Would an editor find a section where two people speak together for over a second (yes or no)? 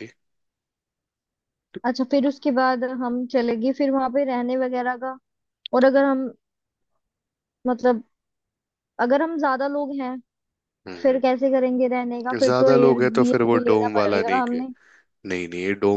yes